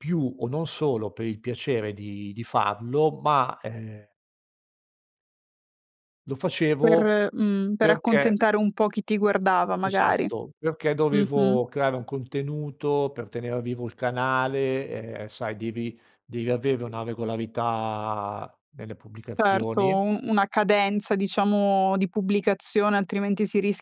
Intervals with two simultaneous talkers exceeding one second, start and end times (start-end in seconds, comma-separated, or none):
none